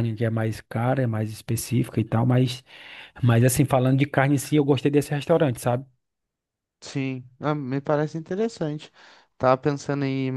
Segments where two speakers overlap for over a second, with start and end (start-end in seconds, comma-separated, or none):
none